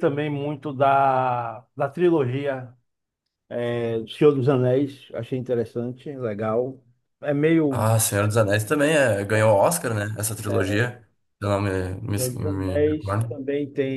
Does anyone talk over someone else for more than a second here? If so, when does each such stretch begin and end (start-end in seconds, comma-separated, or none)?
12.1-13.4